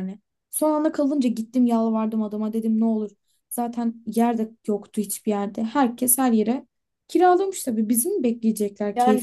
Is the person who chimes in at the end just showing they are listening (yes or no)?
no